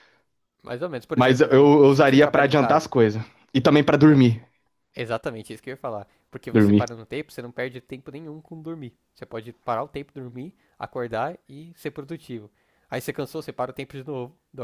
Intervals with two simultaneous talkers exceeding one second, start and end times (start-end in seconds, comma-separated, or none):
1.1-2.9